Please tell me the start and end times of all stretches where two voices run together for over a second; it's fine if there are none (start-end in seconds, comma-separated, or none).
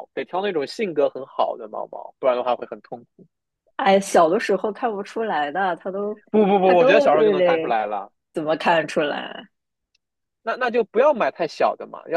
6.6-7.8